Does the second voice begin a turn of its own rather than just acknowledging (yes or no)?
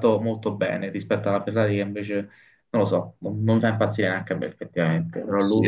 yes